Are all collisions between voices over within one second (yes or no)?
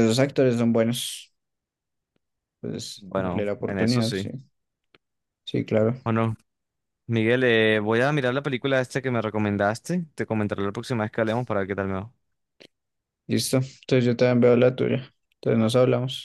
no